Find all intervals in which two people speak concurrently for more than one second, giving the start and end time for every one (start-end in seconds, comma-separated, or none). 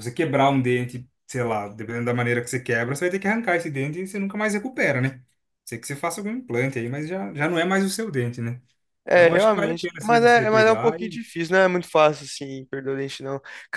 9.1-11.2